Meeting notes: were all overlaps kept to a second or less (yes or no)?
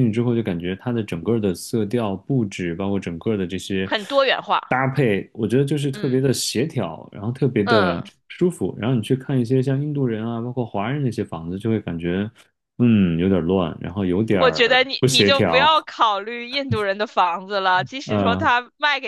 no